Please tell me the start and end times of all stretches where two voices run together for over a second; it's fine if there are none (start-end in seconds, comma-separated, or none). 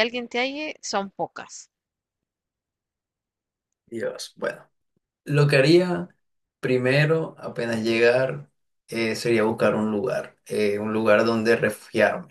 none